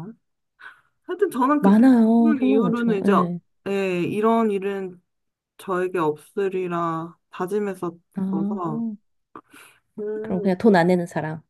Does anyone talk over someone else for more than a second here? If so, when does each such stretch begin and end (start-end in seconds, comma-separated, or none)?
1.6-3.1